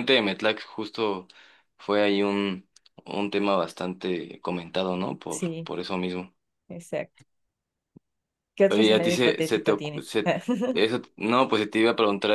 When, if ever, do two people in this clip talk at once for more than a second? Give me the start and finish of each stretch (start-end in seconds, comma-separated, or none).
8.7-10.2